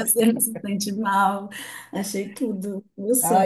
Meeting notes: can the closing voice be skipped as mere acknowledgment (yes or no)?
no